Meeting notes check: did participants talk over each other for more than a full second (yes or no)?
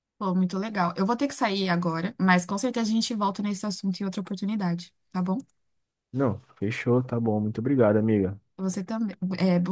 no